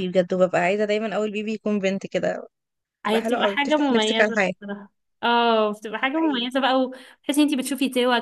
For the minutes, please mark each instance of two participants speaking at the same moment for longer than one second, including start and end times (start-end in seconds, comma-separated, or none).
3.1-4.5